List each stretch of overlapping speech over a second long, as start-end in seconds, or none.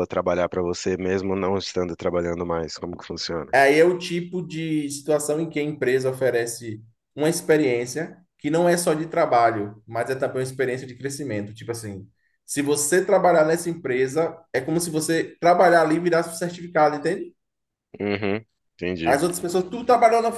none